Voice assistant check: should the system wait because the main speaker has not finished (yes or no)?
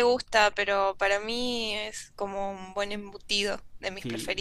no